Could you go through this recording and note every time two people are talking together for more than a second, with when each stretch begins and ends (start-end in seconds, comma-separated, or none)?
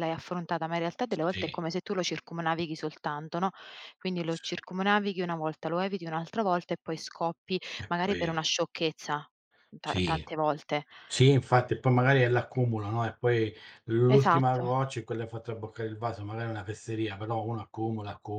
none